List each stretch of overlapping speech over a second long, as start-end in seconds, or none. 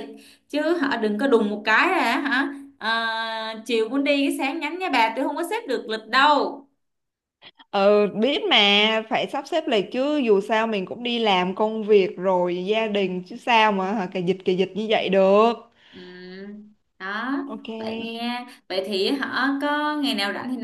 none